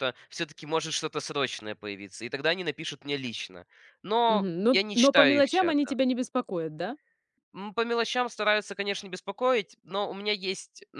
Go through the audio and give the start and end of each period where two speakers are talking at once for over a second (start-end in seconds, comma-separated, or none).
4.3-5.9